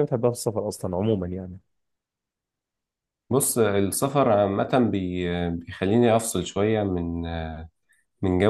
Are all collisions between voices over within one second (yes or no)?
yes